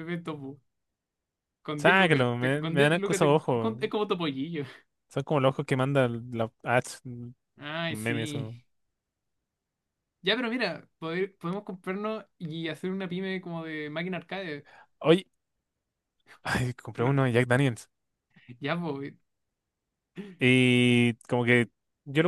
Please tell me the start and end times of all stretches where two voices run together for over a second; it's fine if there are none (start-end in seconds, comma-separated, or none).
1.8-3.7